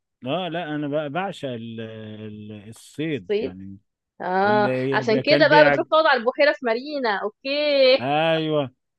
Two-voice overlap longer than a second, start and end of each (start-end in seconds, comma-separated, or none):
4.4-5.8